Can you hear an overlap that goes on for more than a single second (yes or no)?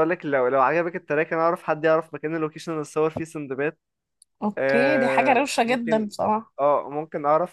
yes